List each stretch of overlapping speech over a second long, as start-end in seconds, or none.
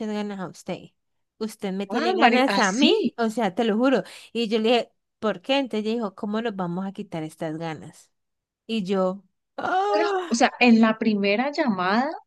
1.9-3.1